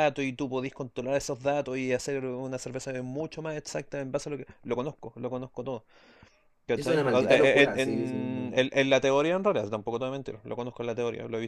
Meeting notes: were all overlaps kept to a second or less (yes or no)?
no